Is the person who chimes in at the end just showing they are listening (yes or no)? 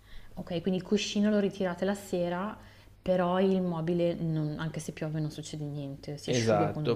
no